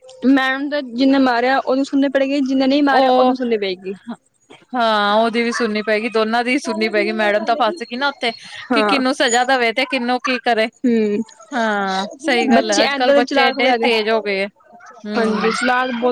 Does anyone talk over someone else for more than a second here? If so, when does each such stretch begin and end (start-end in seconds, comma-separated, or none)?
12.5-13.8